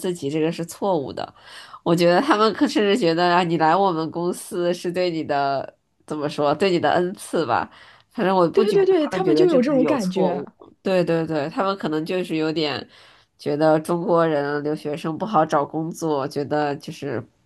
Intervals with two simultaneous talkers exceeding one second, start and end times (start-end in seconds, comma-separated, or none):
8.5-10.4